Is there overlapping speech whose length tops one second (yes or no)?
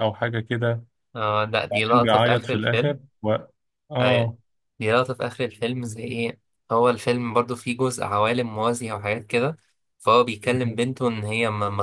yes